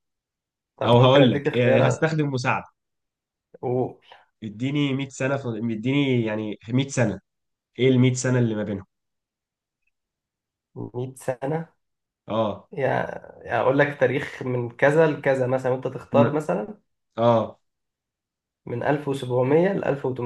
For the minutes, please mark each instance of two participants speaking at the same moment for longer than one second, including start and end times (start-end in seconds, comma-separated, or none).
0.8-2.1